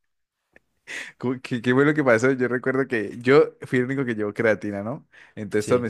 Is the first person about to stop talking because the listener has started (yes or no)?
no